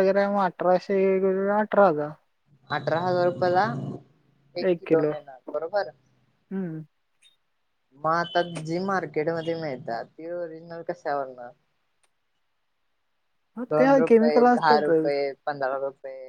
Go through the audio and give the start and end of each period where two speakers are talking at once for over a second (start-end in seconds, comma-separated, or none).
13.8-15.1